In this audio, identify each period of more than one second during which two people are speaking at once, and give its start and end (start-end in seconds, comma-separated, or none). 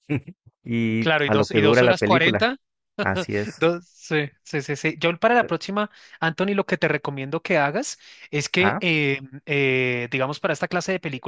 1.0-2.5